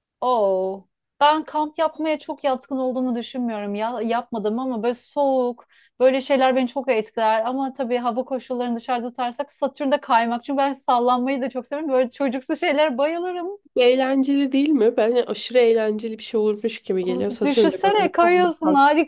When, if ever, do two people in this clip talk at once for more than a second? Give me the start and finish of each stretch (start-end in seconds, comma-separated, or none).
17.0-18.5